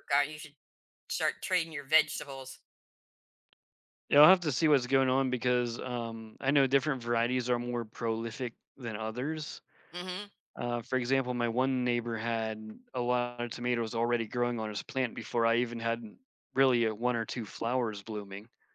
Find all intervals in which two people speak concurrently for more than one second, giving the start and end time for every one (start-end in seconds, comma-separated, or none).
none